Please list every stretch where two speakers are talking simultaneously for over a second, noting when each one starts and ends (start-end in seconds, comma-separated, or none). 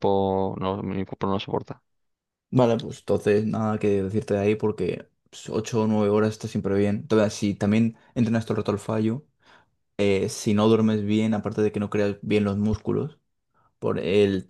none